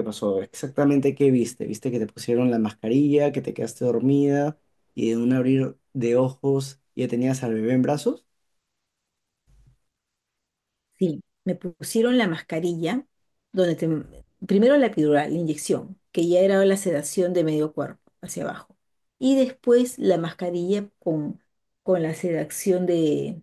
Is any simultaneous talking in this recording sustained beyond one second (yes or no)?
no